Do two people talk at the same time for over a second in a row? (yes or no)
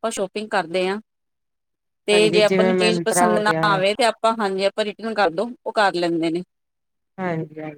yes